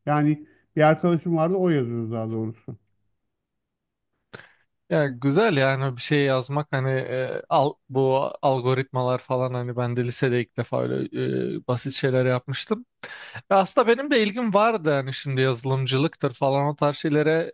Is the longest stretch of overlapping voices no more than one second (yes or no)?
yes